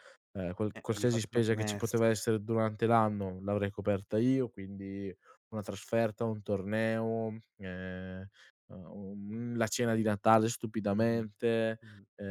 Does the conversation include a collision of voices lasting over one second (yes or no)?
yes